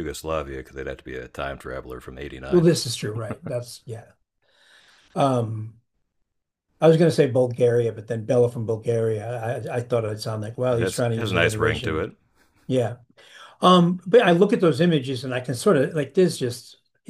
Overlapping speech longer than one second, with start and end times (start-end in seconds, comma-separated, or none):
10.7-12.1